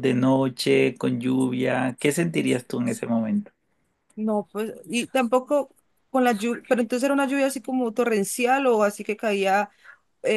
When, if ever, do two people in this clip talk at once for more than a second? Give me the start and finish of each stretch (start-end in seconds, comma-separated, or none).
none